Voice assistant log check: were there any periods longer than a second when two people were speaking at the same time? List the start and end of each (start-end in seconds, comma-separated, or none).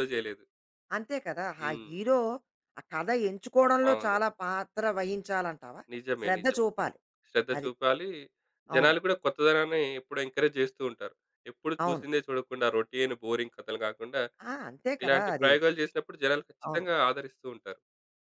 none